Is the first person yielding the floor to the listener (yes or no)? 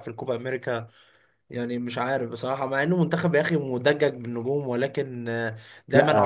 no